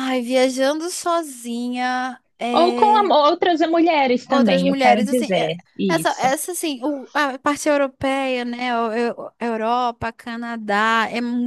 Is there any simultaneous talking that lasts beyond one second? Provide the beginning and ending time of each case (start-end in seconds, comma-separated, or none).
4.3-6.3